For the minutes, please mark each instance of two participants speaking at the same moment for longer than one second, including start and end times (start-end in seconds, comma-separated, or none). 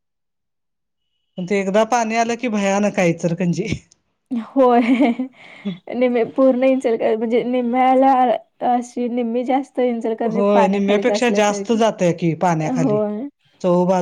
10.3-11.8